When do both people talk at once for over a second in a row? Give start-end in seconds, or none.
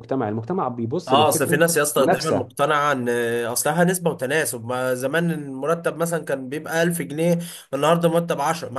1.0-2.5